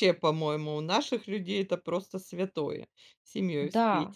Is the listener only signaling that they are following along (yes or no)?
no